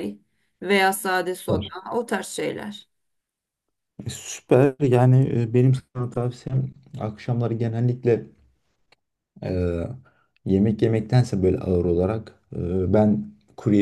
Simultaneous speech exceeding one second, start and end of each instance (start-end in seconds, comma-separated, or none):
none